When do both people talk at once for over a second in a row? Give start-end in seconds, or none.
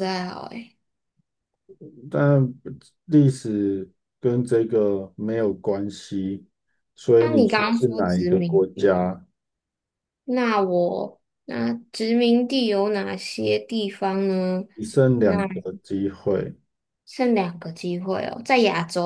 7.2-9.0